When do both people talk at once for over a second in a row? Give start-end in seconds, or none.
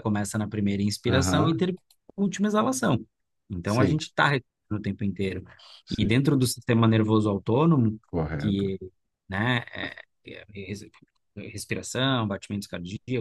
none